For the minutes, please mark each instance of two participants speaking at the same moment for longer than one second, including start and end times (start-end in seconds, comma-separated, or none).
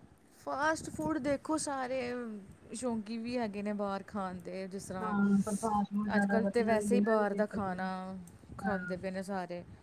6.2-7.8